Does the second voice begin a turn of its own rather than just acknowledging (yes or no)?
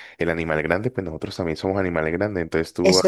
no